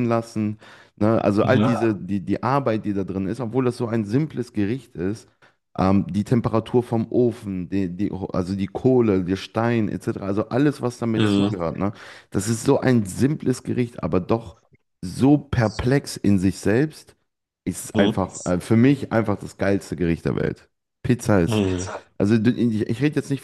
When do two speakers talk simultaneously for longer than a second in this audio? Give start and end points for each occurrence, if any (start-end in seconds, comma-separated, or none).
none